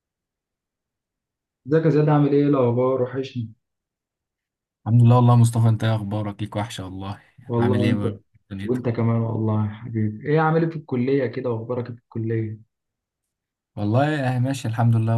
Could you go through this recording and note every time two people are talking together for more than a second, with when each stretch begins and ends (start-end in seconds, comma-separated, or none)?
none